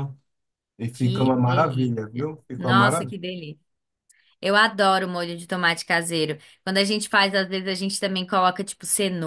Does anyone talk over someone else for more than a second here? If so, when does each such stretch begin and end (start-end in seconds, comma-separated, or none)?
0.9-3.1